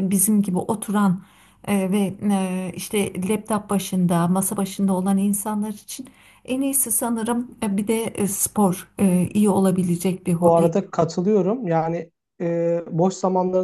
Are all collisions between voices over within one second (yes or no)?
yes